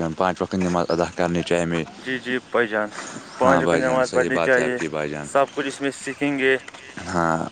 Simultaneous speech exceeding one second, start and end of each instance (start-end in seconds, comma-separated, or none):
3.4-4.8